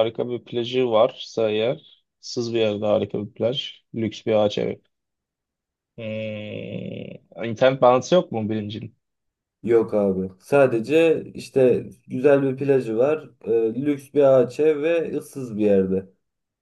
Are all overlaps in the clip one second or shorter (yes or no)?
yes